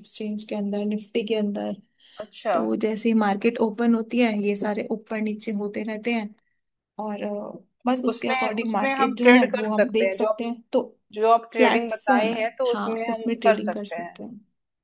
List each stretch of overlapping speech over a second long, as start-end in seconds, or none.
7.9-10.3, 11.6-14.2